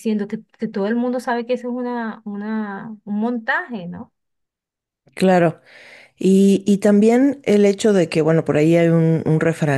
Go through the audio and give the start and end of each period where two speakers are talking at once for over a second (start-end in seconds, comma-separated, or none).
none